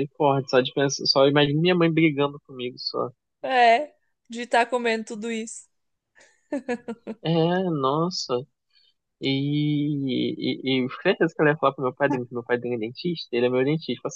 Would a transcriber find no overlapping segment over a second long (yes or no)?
yes